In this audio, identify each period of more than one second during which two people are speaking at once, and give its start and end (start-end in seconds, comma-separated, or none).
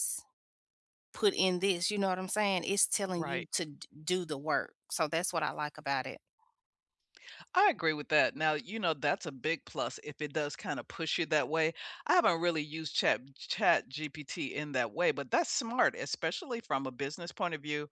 none